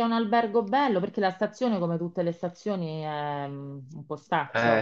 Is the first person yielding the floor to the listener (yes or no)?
yes